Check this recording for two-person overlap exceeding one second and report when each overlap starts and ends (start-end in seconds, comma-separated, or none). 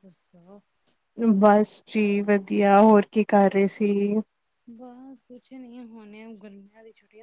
none